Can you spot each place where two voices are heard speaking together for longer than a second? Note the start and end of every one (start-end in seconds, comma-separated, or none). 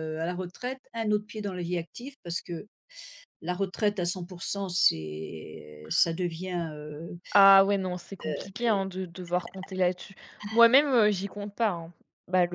none